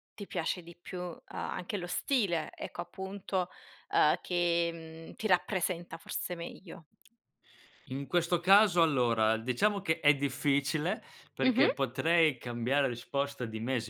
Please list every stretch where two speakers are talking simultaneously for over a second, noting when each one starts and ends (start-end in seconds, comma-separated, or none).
none